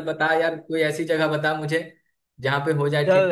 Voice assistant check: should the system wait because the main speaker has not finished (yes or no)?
no